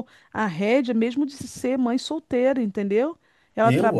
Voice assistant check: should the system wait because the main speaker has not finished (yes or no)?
yes